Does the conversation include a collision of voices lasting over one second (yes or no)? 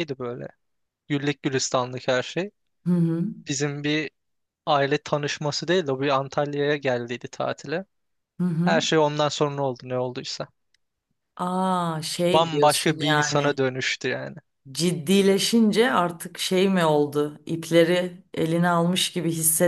yes